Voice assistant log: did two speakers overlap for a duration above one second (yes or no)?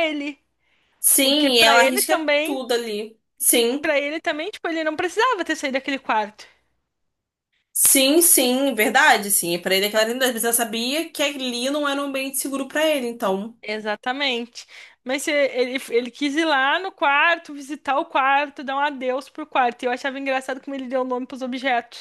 yes